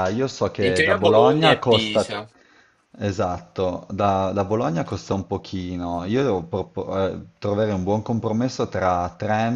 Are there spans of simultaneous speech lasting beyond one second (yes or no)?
yes